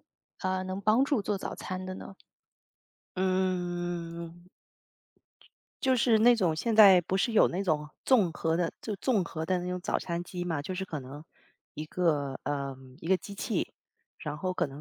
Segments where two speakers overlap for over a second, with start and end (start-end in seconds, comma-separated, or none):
none